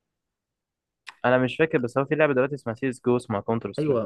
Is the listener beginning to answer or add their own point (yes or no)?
yes